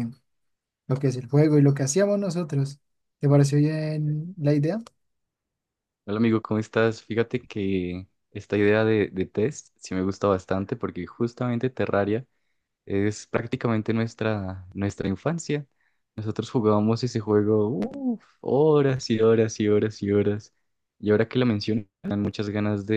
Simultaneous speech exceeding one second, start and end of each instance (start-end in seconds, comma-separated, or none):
none